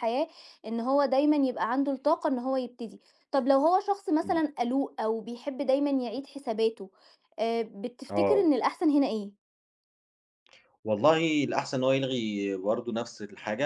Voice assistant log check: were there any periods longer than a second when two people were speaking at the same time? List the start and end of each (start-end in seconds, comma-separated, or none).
none